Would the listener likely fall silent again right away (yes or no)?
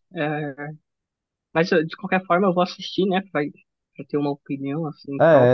no